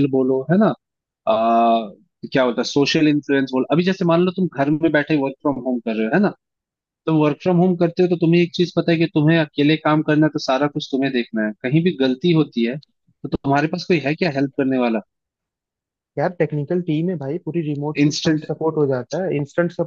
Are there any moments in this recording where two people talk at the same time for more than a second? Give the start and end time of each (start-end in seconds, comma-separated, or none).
none